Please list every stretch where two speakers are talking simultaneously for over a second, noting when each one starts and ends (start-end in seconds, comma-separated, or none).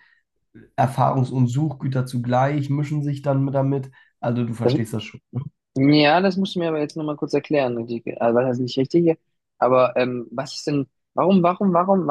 none